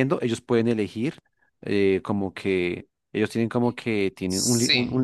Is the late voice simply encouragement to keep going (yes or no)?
yes